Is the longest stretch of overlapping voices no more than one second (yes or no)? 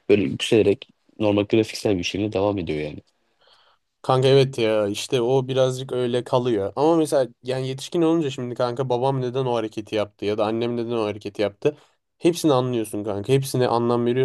yes